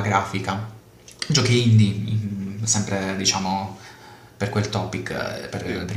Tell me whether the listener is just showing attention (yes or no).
yes